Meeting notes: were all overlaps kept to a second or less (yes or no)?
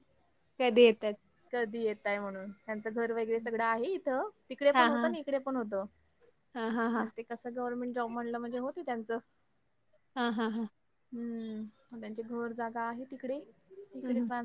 yes